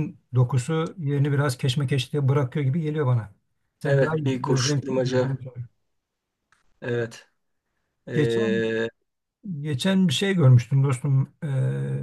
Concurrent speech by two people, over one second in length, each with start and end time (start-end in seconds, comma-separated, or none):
3.8-5.4